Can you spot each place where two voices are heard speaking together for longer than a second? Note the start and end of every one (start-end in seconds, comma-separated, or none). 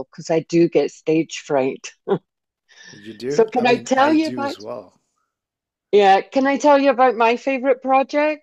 3.3-4.6